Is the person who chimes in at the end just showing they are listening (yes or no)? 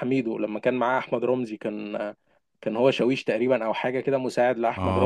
no